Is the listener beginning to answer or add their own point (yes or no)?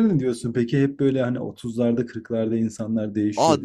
yes